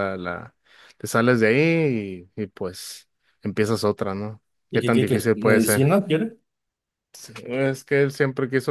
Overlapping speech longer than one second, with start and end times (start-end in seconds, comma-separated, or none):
4.7-6.0